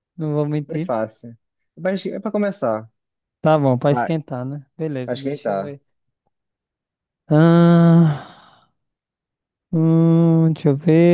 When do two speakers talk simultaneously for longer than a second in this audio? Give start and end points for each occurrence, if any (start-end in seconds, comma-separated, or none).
none